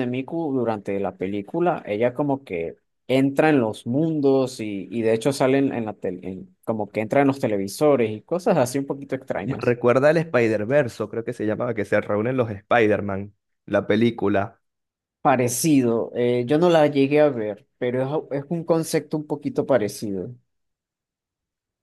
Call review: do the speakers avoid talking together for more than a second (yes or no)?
yes